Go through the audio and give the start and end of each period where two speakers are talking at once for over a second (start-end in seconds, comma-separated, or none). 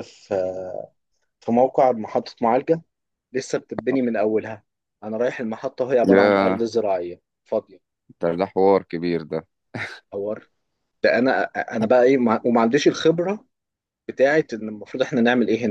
none